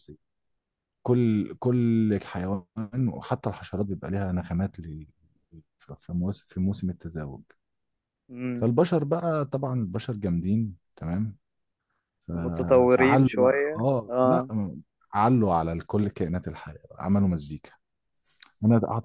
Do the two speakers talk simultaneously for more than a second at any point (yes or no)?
yes